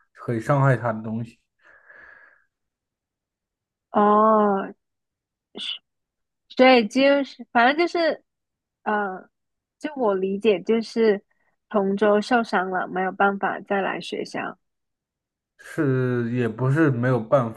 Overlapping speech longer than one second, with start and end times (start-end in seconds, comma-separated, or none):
none